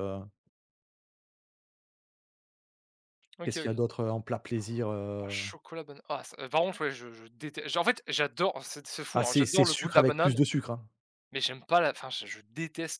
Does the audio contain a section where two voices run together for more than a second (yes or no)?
yes